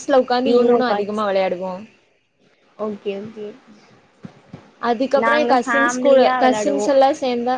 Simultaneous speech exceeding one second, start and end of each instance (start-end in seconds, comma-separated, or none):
5.2-6.9